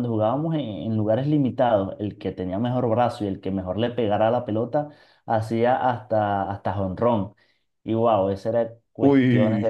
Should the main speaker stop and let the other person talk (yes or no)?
no